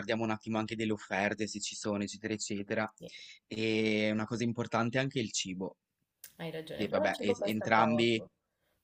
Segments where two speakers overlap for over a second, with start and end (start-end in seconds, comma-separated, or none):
6.7-8.2